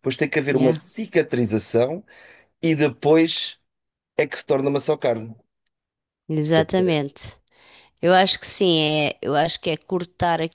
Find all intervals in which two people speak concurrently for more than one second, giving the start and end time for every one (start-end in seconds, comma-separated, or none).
none